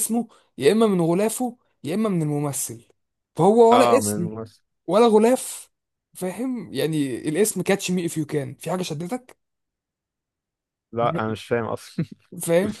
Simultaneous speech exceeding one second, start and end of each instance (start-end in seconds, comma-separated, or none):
none